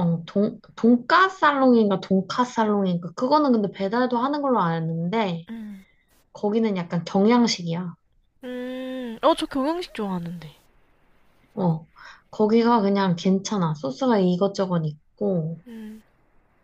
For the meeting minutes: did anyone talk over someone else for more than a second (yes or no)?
no